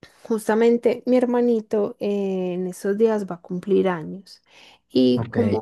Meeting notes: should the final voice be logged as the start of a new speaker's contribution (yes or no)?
no